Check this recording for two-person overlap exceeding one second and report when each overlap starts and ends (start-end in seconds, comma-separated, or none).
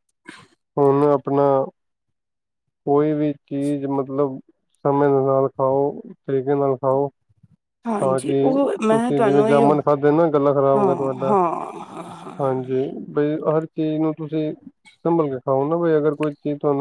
8.0-9.7